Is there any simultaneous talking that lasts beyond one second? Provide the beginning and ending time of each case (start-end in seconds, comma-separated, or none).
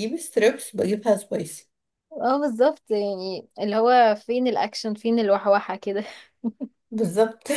none